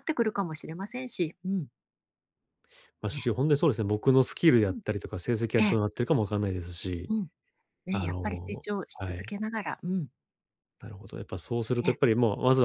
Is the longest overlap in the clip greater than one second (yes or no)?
yes